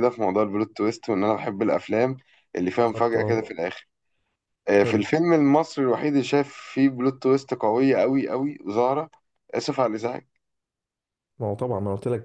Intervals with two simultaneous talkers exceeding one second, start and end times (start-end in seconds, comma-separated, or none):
none